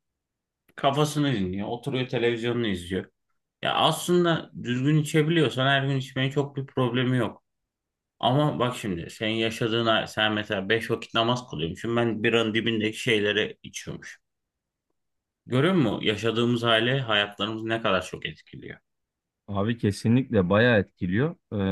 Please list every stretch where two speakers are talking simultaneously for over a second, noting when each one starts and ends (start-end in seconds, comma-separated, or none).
none